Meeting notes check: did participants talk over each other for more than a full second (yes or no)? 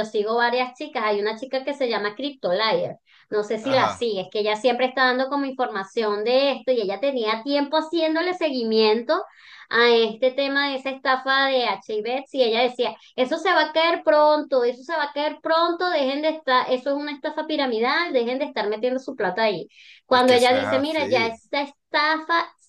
yes